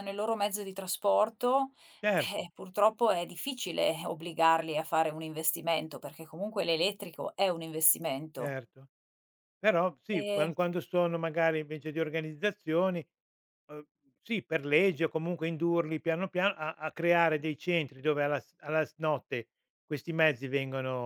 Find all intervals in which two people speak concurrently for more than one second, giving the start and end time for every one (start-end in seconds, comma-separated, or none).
none